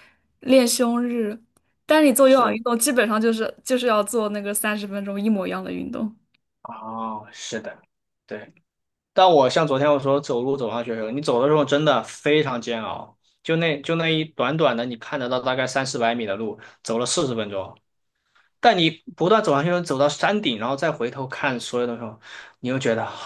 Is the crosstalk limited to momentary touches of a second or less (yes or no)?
yes